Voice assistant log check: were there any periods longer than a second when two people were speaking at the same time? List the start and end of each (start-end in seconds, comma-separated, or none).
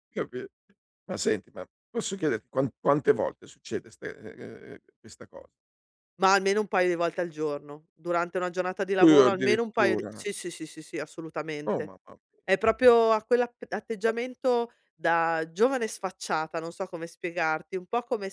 9.0-10.2